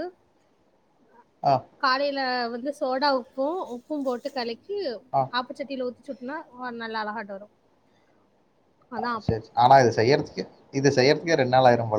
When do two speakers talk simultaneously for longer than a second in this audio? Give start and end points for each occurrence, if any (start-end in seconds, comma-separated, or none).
none